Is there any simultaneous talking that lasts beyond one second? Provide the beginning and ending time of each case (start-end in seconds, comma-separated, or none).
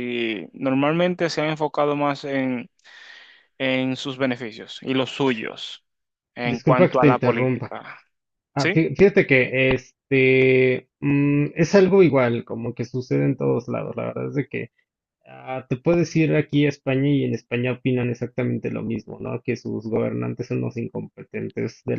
6.4-7.8